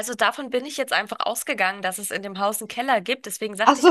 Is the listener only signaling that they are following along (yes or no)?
yes